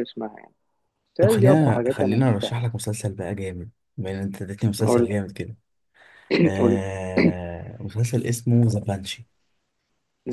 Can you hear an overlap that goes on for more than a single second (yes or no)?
yes